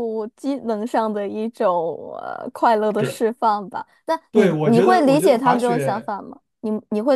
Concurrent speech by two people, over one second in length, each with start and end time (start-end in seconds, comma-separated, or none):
4.3-6.1